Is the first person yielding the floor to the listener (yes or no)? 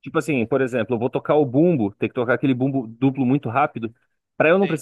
no